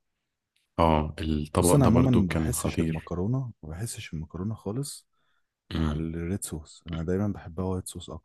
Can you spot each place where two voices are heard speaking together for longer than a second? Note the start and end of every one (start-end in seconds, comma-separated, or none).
1.6-3.1